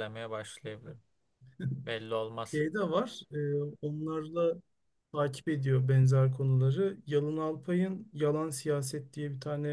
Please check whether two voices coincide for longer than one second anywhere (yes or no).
no